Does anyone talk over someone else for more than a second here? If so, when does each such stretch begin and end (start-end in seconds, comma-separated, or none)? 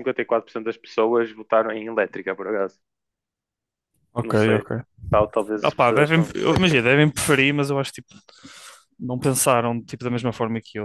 5.6-7.0